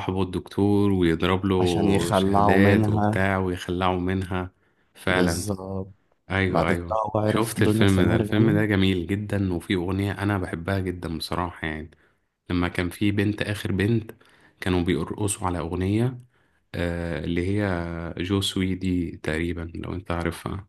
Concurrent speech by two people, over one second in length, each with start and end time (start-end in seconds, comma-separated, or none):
1.6-3.2, 6.5-8.6